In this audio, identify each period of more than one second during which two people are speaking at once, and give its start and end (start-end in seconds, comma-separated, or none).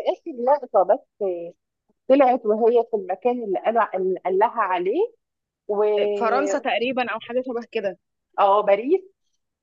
none